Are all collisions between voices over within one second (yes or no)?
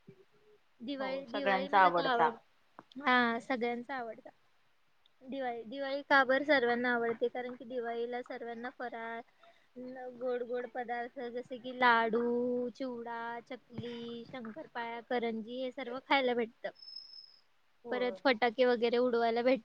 no